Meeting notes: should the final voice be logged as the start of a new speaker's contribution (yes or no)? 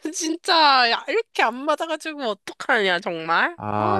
yes